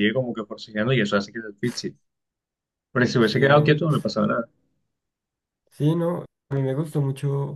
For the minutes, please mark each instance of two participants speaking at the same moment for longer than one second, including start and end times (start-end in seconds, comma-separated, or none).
none